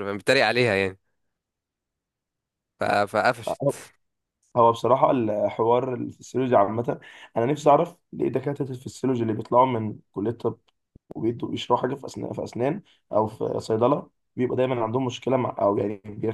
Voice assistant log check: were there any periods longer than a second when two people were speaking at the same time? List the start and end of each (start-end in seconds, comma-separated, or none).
none